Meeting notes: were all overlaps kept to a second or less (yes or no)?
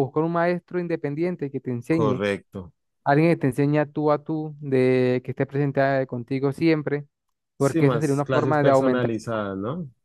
no